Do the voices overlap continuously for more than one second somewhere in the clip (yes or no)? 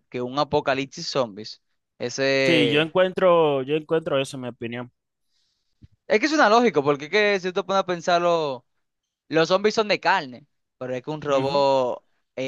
no